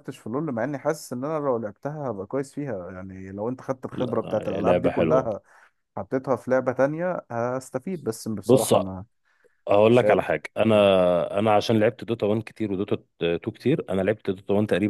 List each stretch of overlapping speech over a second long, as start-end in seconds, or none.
3.9-5.3